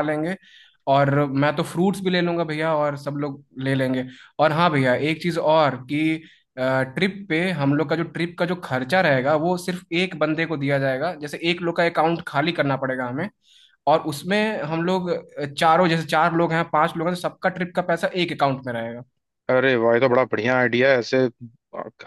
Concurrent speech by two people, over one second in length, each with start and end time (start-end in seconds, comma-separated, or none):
none